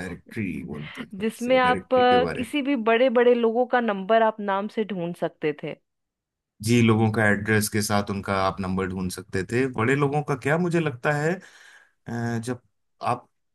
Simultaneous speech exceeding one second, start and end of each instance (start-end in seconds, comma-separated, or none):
1.2-2.5